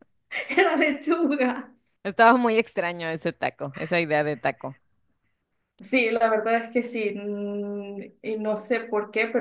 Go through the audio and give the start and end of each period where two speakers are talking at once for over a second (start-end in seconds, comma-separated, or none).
none